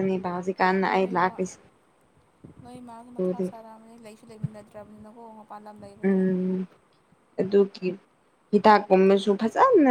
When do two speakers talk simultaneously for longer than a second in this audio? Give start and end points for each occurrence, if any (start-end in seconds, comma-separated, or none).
none